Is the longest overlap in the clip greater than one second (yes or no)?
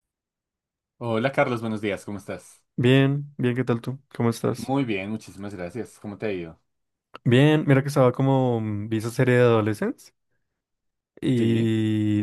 no